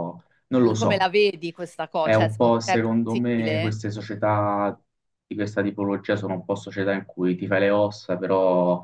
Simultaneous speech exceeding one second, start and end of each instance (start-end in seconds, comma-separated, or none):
2.0-3.7